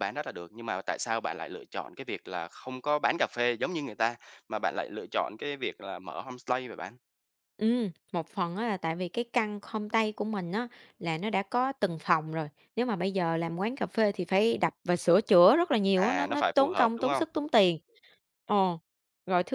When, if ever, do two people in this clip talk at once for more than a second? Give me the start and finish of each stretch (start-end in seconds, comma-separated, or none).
15.9-17.2